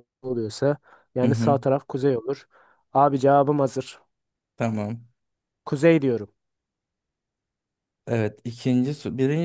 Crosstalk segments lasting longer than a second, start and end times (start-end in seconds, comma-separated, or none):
none